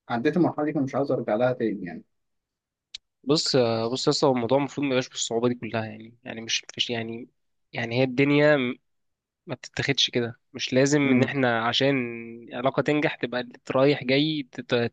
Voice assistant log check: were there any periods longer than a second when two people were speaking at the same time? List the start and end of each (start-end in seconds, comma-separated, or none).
none